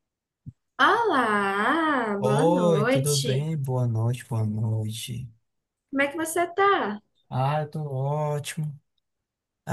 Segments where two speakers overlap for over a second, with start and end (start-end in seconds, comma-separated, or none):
2.2-3.5